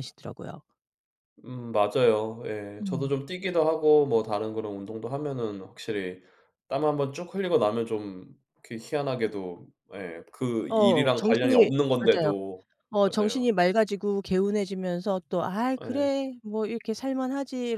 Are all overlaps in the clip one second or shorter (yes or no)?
no